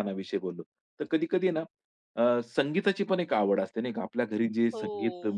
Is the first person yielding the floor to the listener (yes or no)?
no